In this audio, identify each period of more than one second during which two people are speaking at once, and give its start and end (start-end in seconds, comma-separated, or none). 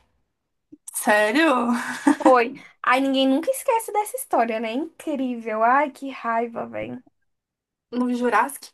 none